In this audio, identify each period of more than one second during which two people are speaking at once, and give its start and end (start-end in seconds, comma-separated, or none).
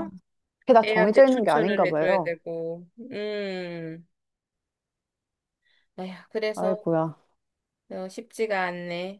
0.8-2.3